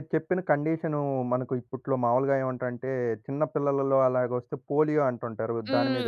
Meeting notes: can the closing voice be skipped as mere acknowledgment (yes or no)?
no